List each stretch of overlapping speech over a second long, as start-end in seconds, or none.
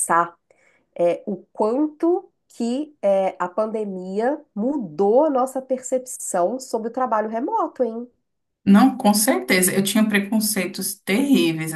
none